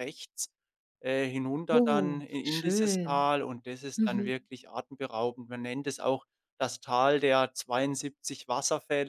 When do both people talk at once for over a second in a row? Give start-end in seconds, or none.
1.7-3.3